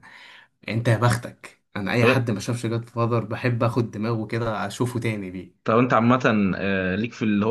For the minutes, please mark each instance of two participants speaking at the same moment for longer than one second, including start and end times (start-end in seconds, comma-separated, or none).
none